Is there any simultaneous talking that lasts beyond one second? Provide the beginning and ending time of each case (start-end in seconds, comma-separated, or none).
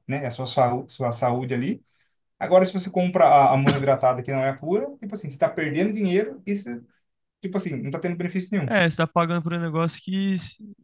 none